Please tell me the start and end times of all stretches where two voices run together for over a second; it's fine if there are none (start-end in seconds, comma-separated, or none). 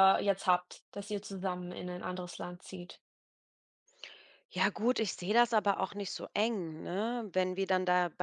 none